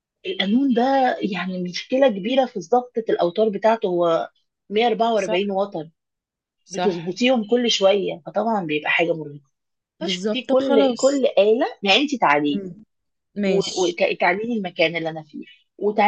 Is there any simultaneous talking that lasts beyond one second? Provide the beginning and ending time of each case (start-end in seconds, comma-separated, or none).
10.0-11.2